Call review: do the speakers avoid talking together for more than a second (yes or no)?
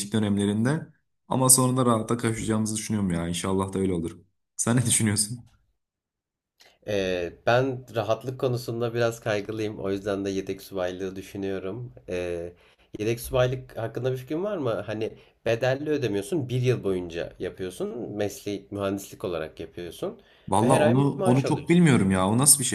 no